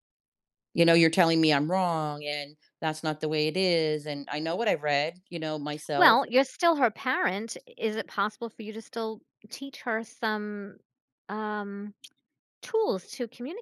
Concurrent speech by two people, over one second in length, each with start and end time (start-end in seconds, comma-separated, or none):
none